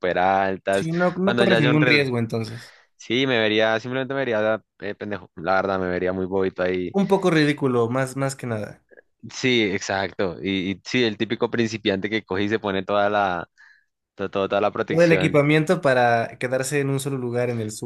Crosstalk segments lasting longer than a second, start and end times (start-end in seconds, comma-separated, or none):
0.7-2.1